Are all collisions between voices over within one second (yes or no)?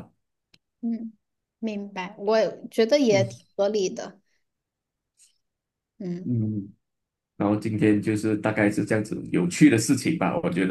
yes